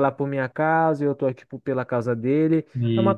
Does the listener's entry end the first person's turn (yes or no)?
no